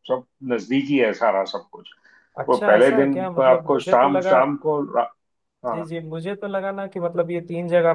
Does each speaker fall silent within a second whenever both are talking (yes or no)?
no